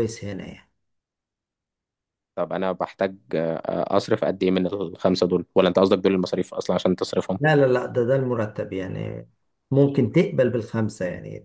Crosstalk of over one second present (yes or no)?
no